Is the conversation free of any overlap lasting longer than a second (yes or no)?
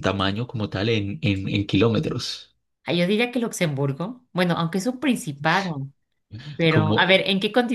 yes